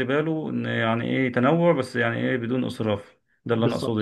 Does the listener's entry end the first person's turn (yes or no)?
yes